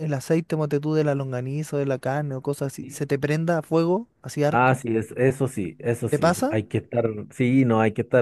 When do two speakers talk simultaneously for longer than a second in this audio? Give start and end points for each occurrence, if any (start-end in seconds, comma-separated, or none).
none